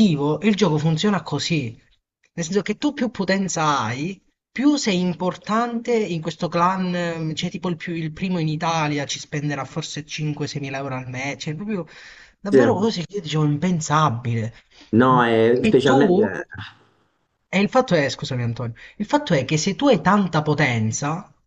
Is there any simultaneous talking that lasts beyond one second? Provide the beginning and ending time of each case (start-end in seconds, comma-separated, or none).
none